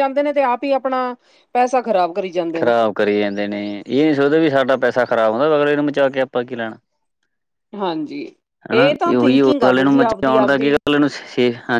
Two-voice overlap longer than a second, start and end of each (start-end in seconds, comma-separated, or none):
8.8-10.8